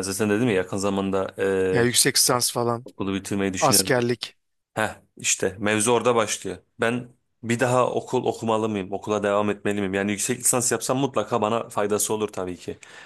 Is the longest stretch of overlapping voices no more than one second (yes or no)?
yes